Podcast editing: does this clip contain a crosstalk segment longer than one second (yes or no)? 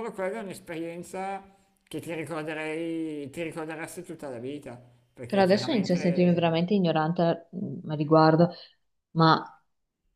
yes